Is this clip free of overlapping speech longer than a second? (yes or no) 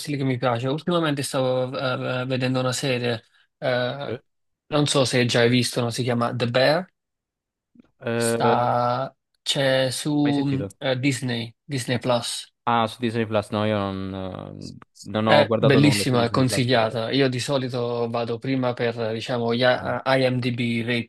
no